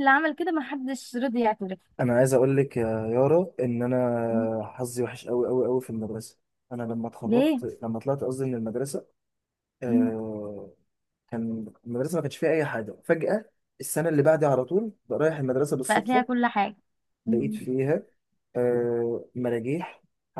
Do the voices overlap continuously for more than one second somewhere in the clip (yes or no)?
no